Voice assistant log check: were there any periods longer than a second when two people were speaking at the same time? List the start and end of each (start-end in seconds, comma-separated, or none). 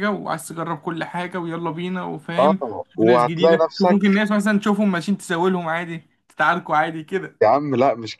2.4-4.0